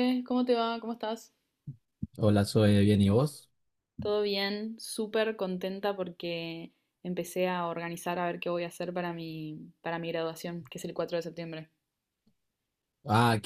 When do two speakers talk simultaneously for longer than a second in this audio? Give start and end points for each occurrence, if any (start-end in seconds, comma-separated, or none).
none